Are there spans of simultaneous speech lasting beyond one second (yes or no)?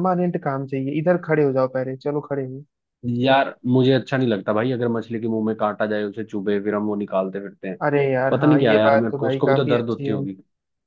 yes